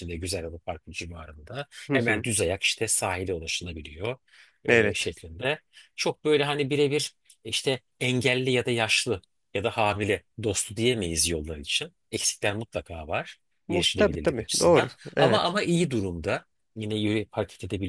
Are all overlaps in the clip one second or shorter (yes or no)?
no